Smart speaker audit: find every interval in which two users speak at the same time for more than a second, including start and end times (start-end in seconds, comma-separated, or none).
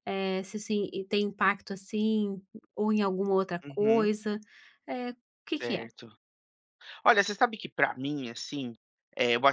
none